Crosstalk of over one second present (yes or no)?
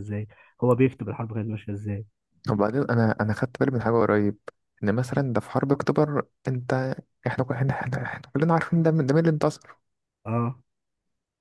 no